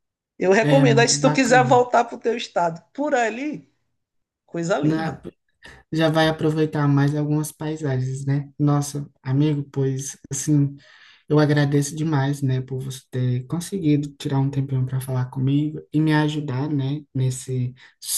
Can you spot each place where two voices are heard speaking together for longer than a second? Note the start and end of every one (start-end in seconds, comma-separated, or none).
0.6-1.9